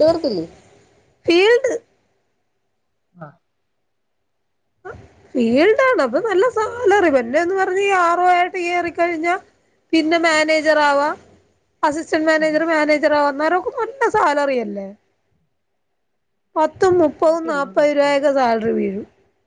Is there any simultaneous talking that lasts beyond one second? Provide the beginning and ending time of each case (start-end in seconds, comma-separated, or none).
17.2-18.5